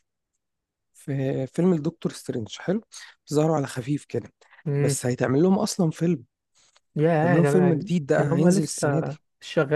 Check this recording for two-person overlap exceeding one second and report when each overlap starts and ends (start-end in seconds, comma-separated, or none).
7.1-9.0